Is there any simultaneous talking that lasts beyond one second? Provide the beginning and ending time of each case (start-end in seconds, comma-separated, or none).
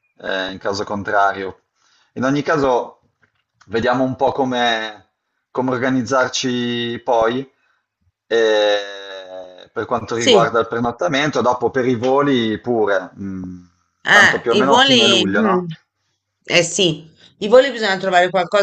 14.1-15.7